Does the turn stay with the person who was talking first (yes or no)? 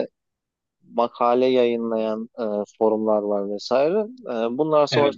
yes